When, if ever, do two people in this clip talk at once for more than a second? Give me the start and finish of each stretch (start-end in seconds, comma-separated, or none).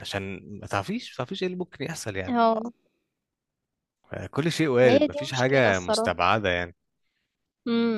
4.8-6.2